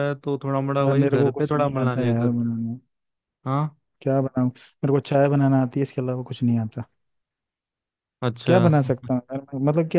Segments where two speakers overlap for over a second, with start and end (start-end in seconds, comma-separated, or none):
0.8-2.4